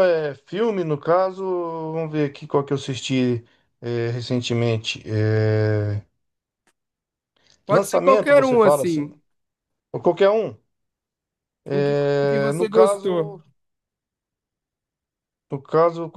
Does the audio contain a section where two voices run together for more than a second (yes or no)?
yes